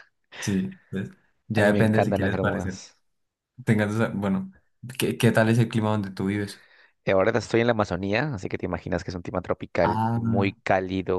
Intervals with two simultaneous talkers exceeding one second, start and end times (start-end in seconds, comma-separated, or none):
1.6-2.8